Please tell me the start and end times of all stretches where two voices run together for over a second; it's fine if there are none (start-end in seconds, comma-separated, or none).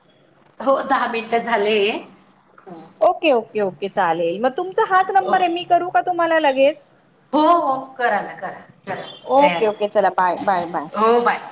none